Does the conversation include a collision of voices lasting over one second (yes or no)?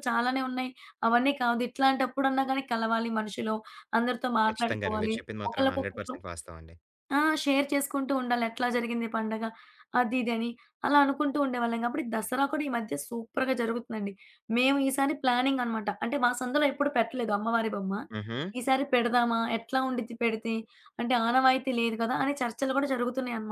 yes